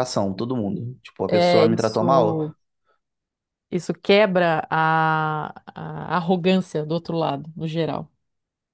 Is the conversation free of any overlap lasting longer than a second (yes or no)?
no